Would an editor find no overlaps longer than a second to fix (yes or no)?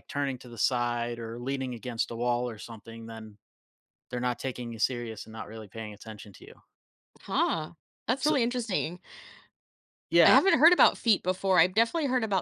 yes